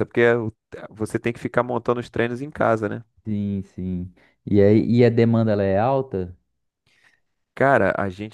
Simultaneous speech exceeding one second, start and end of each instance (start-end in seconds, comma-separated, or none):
none